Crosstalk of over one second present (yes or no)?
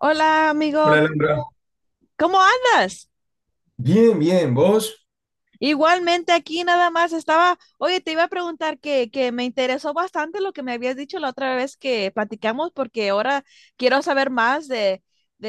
no